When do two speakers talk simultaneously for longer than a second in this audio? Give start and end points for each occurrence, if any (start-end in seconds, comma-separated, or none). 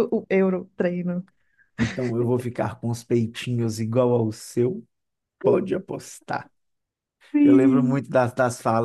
none